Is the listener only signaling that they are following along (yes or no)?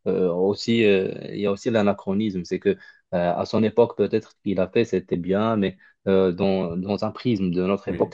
yes